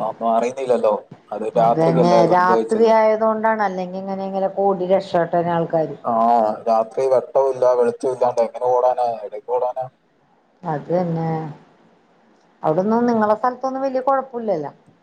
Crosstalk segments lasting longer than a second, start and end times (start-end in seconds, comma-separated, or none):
1.6-2.9